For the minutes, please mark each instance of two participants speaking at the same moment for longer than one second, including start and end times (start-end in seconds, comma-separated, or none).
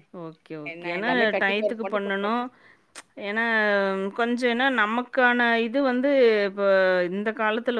0.7-2.4